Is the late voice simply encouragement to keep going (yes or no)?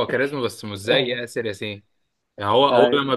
yes